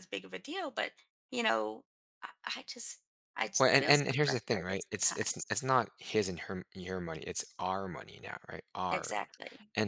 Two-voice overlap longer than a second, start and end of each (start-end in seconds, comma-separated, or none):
3.6-5.6